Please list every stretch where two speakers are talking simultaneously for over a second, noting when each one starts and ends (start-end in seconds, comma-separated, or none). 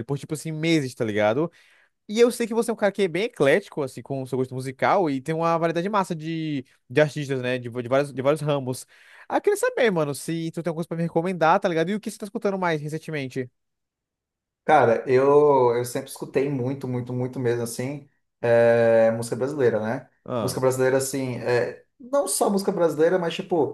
none